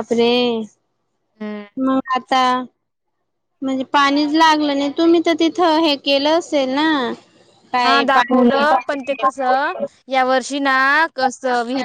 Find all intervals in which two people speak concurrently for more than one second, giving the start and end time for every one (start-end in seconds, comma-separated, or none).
none